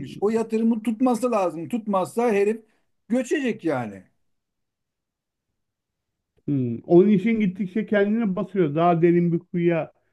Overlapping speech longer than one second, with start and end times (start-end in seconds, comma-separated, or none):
none